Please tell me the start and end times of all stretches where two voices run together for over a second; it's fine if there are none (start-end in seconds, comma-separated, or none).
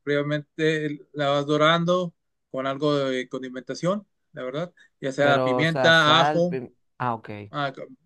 5.2-6.6